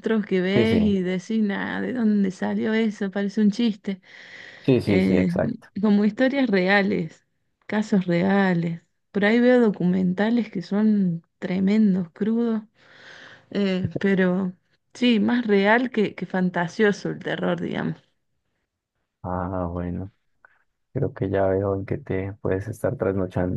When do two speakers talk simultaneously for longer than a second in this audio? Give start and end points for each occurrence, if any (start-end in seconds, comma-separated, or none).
none